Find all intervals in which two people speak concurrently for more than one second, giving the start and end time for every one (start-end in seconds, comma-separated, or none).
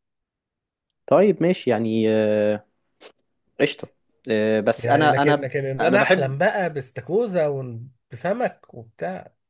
4.8-6.3